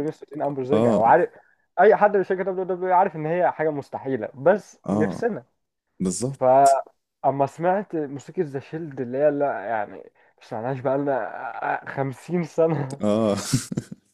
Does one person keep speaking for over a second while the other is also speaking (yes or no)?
no